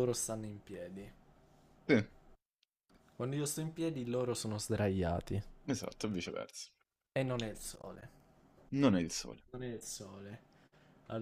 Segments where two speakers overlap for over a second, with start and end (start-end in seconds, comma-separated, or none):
none